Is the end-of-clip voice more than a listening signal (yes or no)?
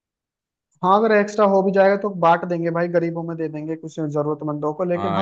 yes